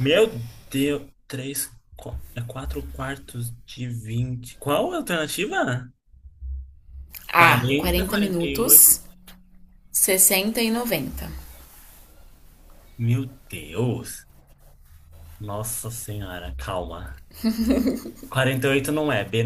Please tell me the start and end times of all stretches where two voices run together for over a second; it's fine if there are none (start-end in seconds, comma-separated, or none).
7.3-8.8